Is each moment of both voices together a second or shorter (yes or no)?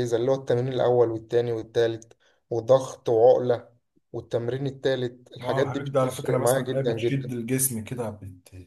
no